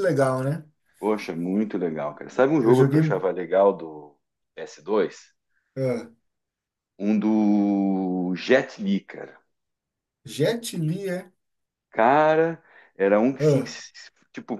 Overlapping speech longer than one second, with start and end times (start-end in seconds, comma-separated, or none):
none